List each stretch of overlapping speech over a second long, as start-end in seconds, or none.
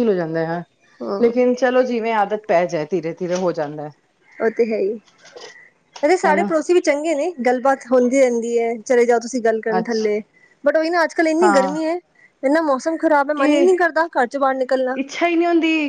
none